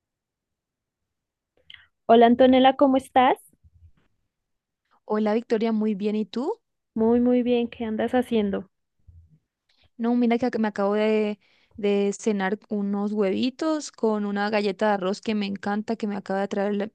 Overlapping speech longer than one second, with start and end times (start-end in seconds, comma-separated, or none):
none